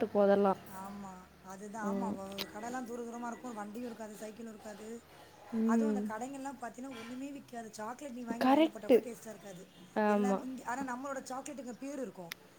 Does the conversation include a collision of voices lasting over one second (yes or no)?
no